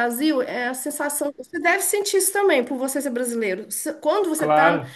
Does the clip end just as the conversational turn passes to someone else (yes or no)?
no